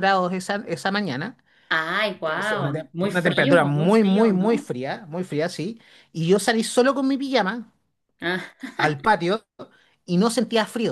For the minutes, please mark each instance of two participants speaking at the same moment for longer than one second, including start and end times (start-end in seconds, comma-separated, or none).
2.3-4.7